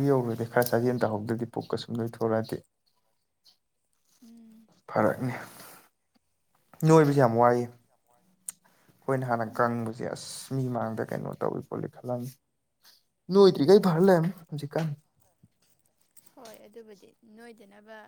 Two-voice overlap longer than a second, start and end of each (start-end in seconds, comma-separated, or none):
none